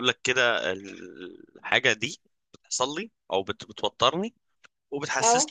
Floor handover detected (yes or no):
no